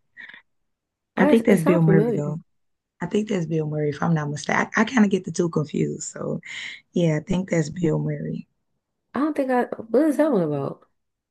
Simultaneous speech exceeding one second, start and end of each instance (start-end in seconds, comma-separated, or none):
1.2-2.4